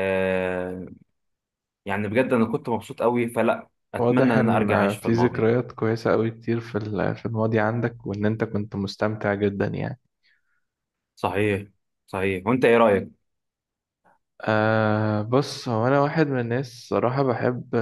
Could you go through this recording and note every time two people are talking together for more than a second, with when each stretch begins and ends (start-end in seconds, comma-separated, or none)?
4.0-5.5